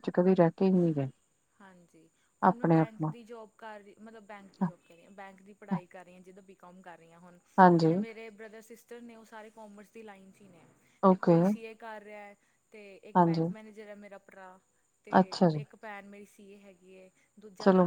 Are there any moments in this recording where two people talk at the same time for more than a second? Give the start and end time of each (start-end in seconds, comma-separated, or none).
none